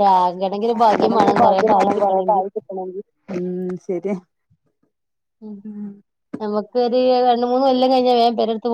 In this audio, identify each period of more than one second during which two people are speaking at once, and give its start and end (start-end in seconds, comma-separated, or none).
1.0-2.5